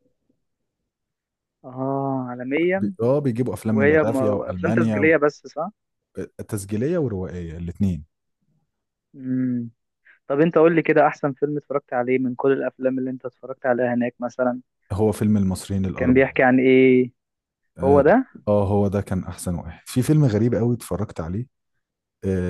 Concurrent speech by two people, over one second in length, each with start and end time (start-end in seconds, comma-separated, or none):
3.7-5.2